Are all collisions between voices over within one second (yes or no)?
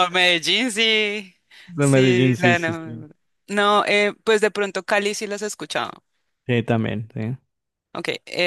no